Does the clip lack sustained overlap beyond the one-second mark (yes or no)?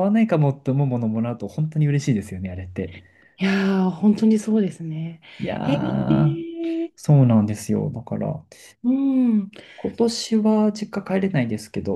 no